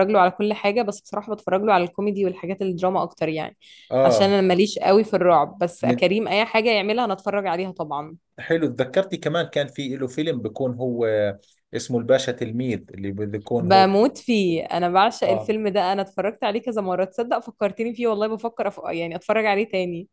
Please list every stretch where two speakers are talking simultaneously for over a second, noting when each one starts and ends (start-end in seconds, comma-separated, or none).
none